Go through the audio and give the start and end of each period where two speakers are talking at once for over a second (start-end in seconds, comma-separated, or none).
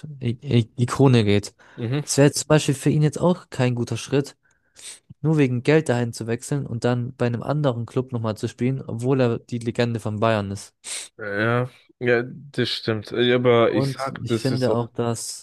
13.7-14.9